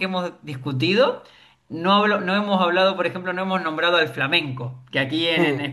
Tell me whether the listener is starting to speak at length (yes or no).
no